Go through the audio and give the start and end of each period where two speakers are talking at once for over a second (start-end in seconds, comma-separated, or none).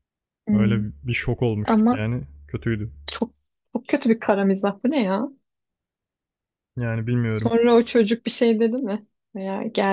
none